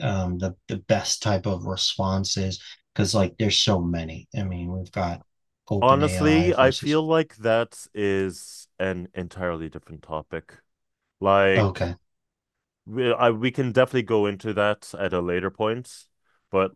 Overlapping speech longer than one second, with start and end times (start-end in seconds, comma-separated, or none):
5.8-7.0